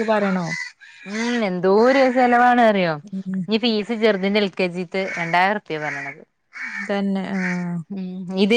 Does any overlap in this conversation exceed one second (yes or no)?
no